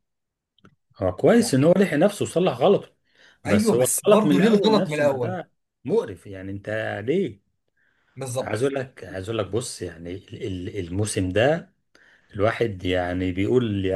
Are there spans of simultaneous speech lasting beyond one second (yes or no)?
yes